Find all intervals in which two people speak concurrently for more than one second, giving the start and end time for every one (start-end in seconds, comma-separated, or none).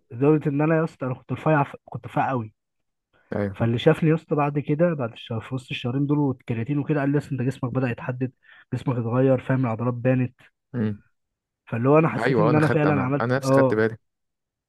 12.2-13.8